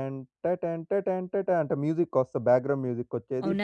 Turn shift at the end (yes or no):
yes